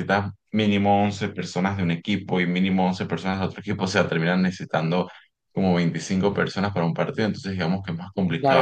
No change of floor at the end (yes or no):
no